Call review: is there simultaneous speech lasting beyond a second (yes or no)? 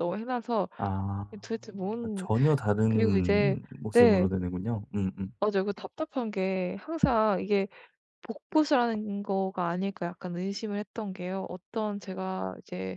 yes